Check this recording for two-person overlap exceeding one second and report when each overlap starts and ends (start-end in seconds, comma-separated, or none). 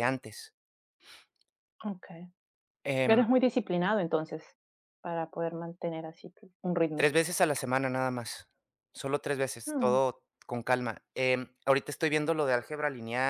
none